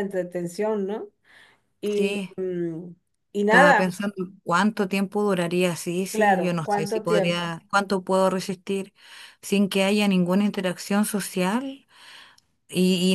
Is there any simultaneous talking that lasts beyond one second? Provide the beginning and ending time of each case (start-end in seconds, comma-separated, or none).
6.1-7.6